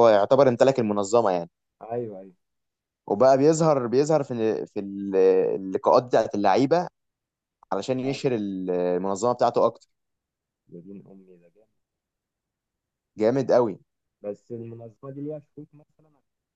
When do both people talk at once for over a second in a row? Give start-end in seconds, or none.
none